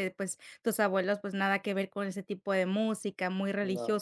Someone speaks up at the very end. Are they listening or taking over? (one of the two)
listening